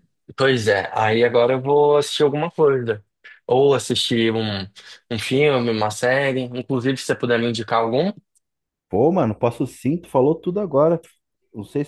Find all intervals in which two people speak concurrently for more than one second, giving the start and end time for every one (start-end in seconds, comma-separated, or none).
none